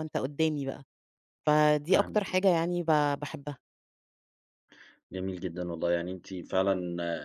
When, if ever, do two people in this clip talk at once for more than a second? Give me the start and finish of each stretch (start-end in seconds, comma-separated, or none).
none